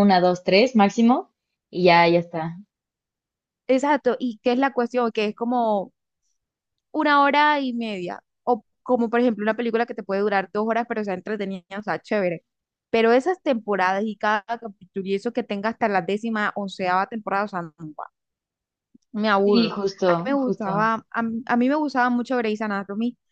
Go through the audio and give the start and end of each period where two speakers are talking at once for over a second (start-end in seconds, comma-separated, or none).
19.4-20.9